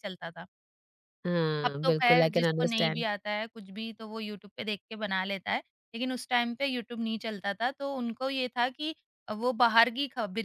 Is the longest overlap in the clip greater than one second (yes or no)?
yes